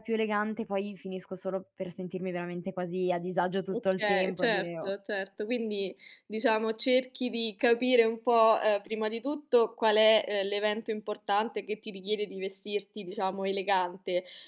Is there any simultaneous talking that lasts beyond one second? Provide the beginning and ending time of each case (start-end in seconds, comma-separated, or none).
3.7-5.0